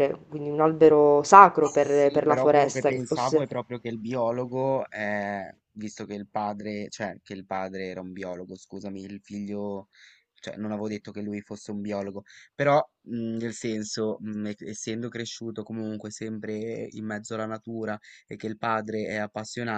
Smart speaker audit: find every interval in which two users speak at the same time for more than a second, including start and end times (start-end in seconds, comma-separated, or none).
1.8-3.5